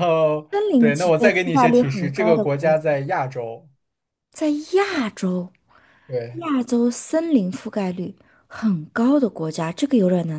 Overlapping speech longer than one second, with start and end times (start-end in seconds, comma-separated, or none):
0.5-2.8